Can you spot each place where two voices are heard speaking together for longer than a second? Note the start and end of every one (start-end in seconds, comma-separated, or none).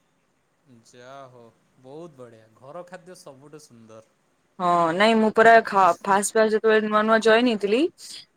none